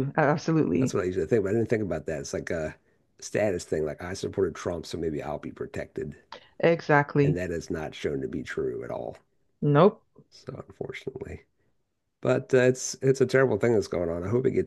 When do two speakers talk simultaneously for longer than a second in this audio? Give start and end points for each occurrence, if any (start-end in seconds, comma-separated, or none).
none